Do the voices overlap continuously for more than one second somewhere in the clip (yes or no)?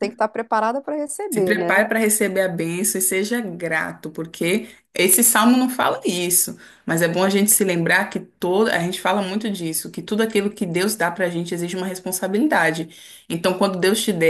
no